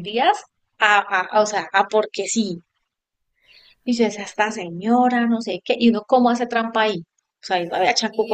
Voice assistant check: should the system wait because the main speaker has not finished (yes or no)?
no